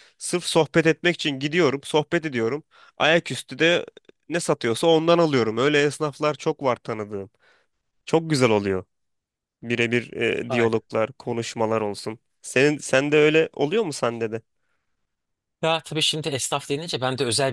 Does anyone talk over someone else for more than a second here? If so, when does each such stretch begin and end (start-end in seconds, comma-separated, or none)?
none